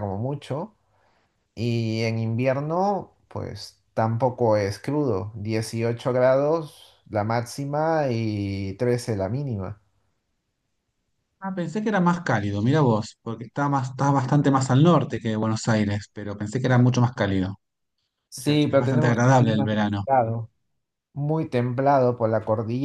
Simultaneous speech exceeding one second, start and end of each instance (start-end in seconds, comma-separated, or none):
18.4-20.0